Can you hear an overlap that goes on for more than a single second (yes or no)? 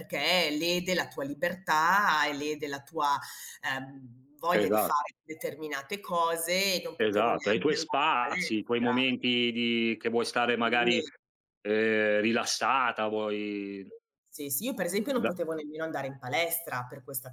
yes